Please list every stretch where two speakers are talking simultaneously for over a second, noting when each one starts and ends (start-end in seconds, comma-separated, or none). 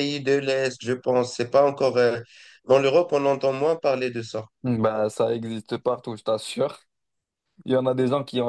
none